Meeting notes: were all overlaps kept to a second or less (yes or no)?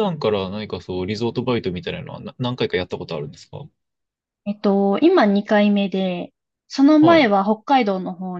yes